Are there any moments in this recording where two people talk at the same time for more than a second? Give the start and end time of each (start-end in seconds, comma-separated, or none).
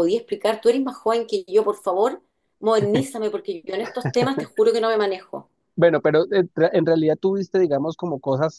none